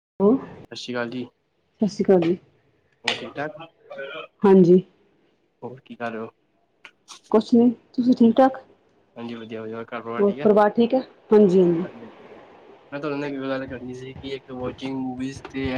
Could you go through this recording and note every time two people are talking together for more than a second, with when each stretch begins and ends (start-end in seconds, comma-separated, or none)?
none